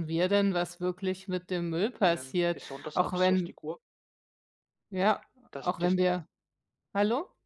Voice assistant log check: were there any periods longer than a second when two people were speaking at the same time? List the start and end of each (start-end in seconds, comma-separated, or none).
2.0-3.6